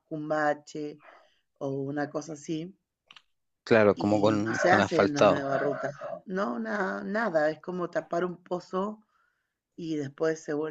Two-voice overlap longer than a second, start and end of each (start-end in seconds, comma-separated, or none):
4.0-5.5